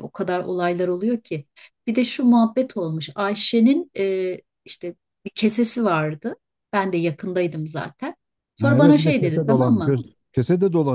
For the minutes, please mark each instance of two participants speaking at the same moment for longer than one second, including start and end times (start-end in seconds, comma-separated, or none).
8.6-10.0